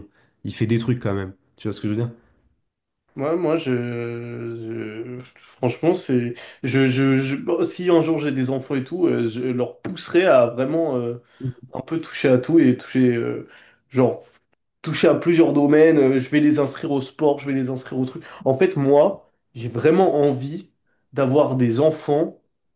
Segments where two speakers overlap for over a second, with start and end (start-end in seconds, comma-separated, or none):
none